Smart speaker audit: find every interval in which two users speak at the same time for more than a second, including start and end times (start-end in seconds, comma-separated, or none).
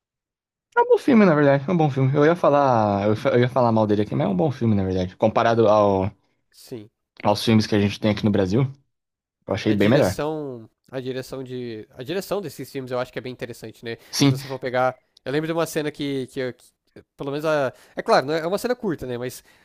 none